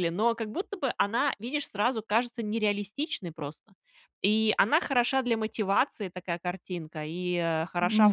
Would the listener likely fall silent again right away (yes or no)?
yes